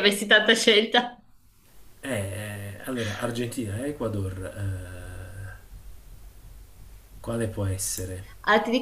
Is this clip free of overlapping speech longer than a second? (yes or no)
yes